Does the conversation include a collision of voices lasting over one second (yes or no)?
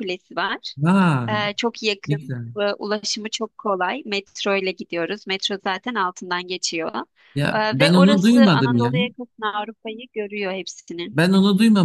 yes